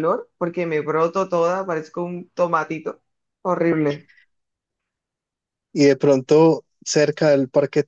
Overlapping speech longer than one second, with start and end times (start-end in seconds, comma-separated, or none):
none